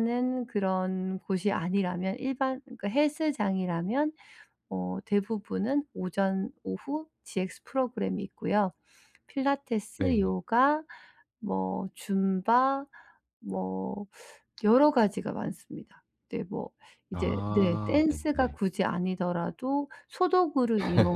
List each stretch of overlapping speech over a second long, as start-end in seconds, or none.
17.1-18.6